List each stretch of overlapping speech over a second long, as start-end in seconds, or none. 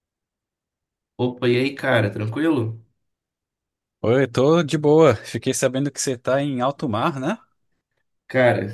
none